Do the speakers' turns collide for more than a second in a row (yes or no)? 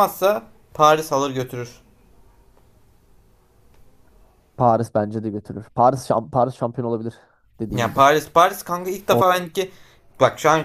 no